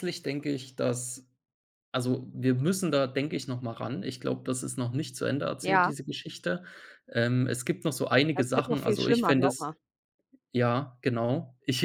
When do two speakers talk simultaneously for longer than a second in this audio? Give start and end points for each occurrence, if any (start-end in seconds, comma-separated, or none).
8.3-9.7